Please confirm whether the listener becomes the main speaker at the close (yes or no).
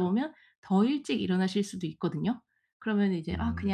no